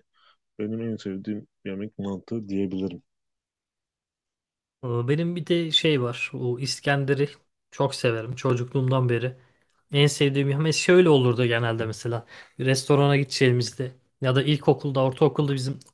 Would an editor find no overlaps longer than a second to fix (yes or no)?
yes